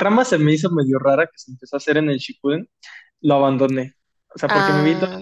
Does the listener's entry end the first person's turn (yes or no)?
no